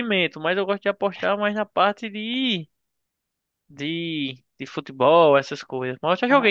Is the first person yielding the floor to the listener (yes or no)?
no